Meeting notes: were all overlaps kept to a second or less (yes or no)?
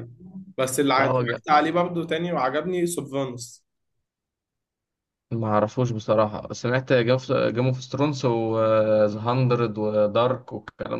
yes